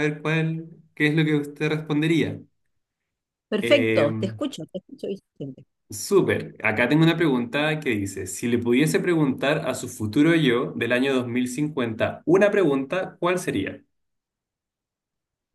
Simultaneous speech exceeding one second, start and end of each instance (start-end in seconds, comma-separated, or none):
none